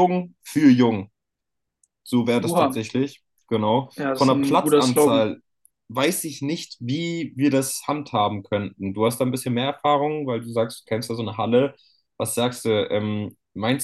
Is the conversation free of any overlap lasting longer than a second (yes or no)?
no